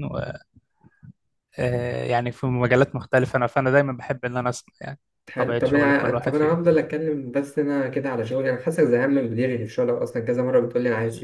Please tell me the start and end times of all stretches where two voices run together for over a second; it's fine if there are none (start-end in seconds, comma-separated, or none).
5.3-6.6